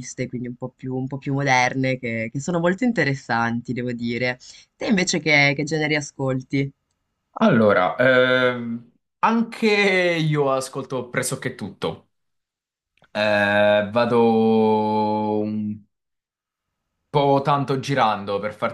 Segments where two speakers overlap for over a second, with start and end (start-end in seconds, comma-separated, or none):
none